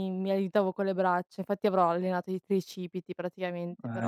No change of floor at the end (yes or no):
no